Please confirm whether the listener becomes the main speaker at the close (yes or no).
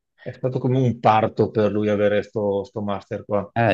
yes